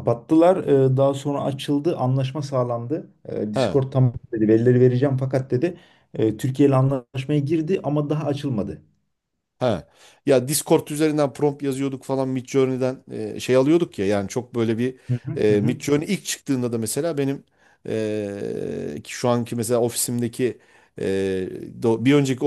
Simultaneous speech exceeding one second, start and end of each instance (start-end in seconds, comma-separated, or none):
none